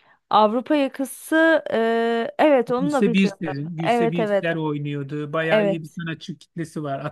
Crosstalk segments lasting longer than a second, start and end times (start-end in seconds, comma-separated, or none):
2.8-4.5